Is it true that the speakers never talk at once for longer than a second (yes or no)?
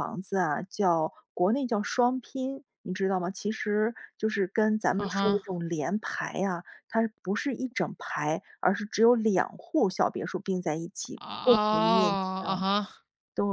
no